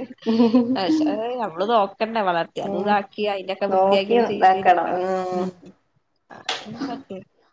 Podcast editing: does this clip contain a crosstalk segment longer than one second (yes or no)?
yes